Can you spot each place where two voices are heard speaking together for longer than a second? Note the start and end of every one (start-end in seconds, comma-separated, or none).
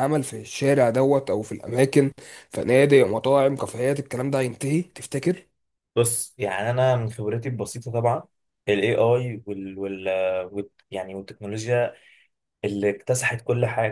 none